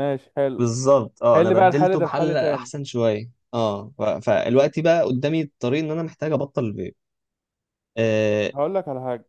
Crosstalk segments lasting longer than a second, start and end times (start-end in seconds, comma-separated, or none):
1.3-2.7